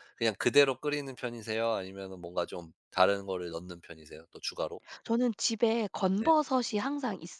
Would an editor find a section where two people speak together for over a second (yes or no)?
no